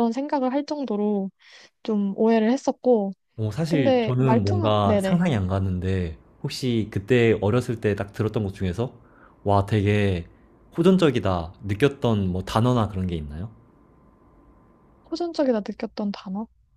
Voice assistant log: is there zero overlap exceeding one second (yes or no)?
no